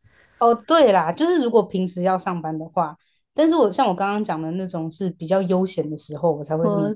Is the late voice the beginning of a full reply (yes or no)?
no